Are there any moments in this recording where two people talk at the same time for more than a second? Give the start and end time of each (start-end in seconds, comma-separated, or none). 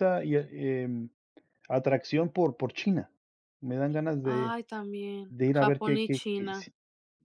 5.3-6.7